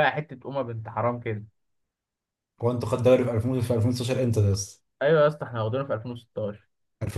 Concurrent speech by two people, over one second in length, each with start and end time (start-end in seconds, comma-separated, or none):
none